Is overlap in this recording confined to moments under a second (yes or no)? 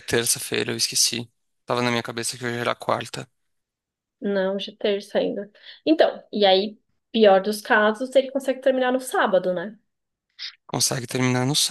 yes